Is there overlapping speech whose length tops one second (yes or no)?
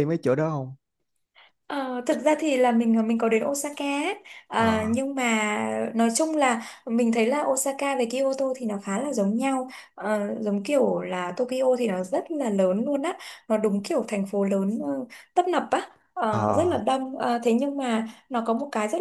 no